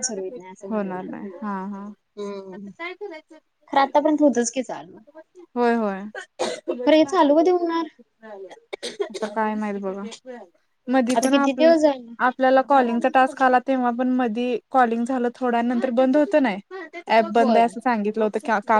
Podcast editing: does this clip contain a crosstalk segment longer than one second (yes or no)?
no